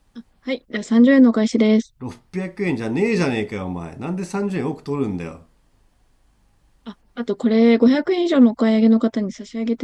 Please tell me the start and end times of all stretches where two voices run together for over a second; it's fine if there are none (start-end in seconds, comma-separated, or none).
none